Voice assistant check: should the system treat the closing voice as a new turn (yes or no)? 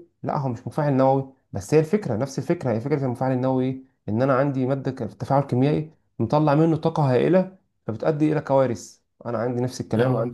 no